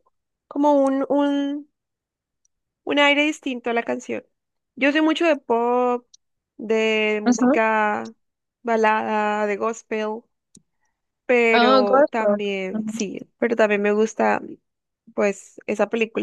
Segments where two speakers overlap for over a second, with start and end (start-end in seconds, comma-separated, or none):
11.5-13.1